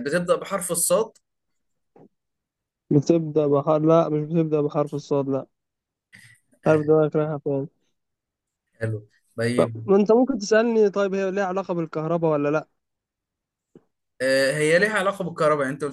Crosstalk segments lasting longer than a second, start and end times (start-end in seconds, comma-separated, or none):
none